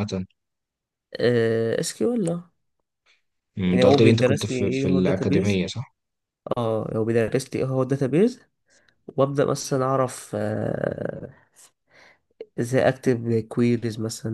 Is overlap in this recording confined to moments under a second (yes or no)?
no